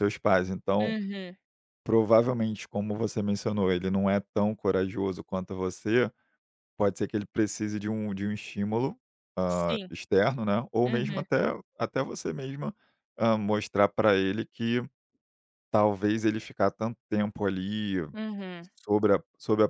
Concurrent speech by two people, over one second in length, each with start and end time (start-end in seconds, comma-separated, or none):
none